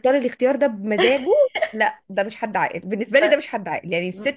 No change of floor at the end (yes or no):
yes